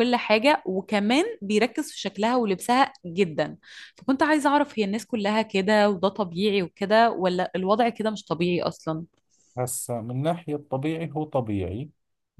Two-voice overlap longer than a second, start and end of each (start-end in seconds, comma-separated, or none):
none